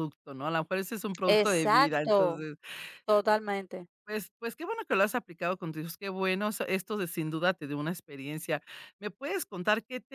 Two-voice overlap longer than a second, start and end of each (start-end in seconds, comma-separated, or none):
1.3-2.5